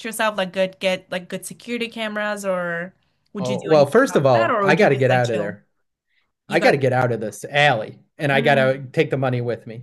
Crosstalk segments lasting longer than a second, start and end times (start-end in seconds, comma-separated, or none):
3.4-5.6